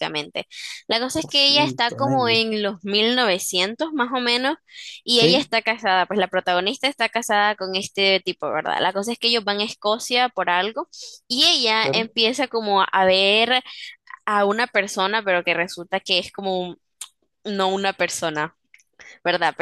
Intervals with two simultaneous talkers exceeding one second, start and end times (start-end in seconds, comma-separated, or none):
1.2-2.4